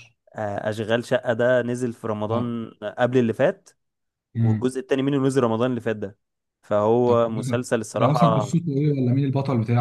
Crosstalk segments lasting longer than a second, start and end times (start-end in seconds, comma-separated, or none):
7.1-8.5